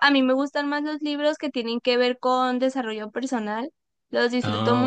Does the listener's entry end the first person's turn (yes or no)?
no